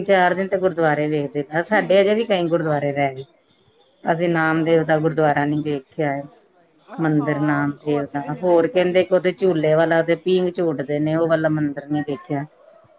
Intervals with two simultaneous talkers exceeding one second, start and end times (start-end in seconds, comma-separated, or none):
7.0-9.1